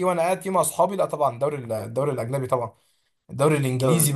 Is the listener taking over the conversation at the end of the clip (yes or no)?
no